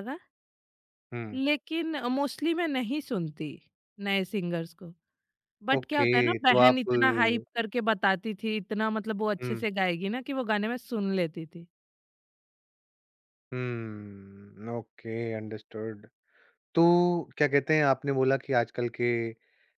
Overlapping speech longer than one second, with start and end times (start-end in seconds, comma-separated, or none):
5.8-7.5